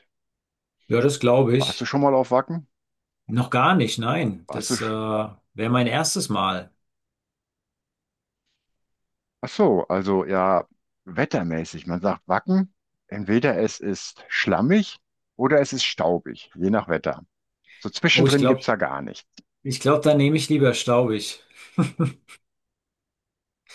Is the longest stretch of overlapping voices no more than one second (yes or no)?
yes